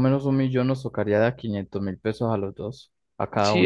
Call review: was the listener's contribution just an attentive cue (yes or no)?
no